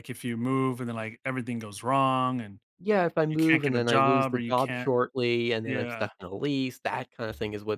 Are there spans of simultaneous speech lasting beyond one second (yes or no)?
yes